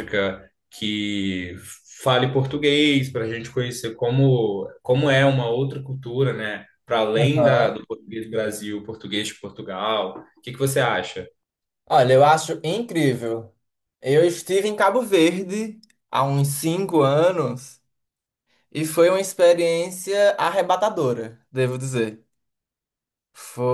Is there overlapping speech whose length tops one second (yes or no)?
no